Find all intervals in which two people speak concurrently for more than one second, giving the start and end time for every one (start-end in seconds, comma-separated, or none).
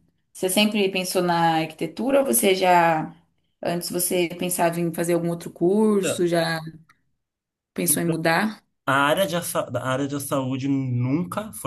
none